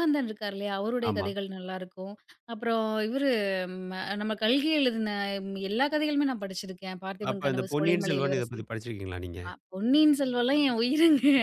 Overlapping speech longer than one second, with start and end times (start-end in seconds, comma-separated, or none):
7.3-8.6